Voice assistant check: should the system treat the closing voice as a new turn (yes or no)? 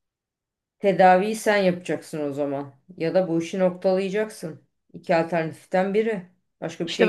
yes